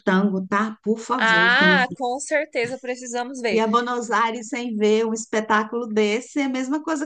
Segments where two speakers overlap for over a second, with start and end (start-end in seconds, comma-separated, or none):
none